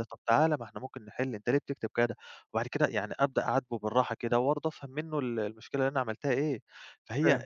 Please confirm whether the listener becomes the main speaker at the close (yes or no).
no